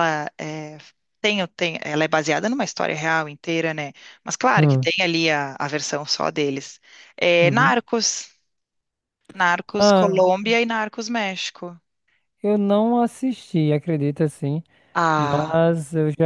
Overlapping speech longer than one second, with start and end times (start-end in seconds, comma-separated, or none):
none